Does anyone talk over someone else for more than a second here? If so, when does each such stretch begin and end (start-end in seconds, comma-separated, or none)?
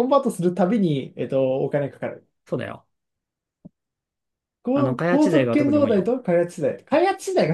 4.7-6.1